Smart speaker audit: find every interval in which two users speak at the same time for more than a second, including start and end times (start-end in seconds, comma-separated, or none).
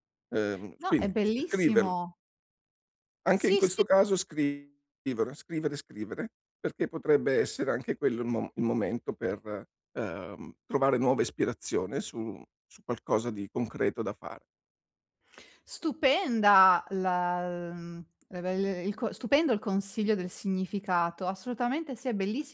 0.8-2.0